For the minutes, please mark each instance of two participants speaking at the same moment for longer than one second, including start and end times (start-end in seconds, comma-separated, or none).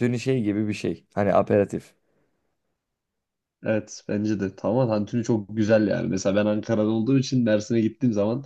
none